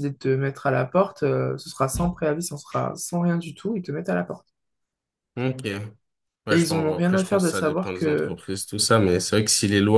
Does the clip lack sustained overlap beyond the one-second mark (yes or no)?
no